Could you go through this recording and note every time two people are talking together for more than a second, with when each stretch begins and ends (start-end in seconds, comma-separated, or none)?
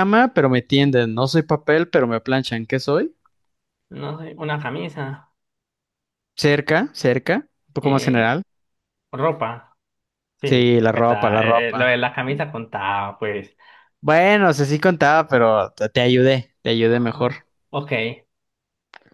10.4-11.9